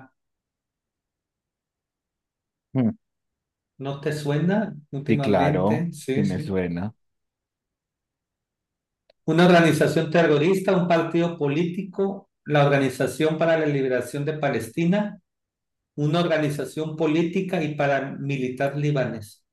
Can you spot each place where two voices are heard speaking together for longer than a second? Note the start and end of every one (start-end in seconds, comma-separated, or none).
5.1-6.5